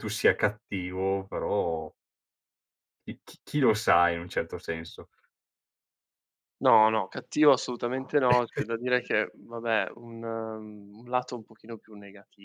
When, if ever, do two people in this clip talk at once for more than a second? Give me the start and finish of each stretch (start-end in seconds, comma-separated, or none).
none